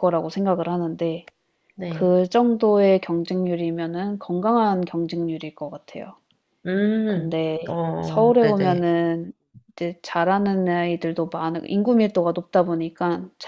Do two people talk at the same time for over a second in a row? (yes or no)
yes